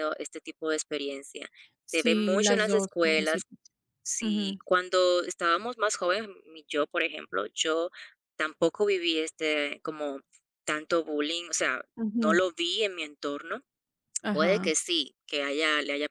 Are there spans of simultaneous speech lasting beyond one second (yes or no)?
yes